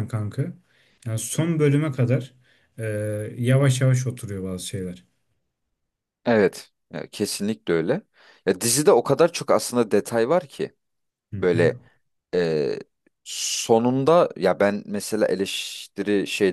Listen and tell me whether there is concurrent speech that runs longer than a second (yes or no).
no